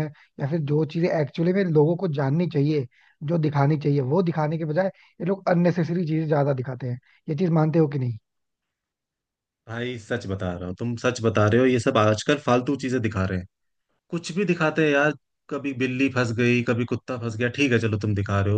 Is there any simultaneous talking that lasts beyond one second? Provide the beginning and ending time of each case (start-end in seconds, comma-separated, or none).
none